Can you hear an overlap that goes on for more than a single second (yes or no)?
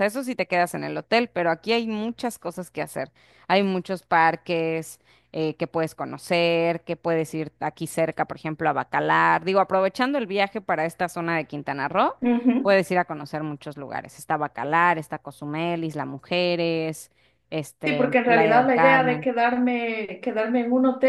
yes